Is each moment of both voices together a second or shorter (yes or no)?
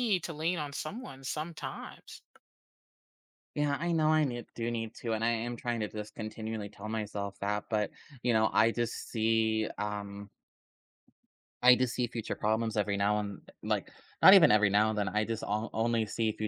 yes